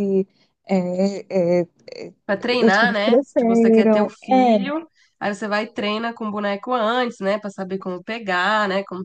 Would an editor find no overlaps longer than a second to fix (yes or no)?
no